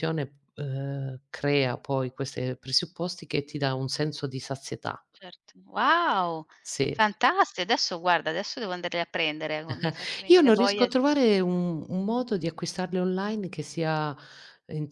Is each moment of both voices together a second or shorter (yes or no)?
yes